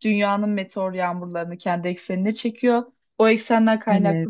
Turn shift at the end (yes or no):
no